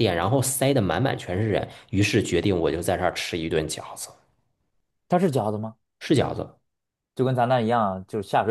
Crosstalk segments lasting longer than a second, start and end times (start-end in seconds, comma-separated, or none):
none